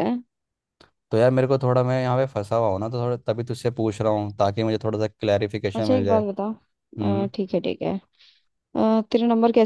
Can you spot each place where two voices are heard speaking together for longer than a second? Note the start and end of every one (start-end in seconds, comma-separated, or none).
none